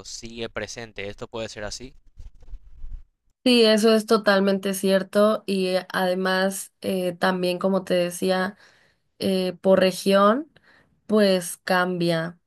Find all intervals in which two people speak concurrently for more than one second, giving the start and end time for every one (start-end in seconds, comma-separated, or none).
none